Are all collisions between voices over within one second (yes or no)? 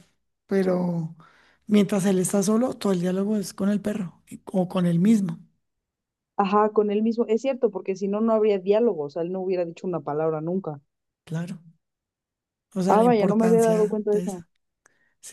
no